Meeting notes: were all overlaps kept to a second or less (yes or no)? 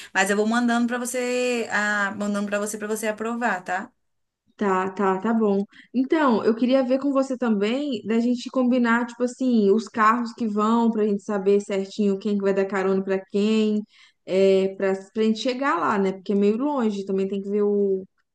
yes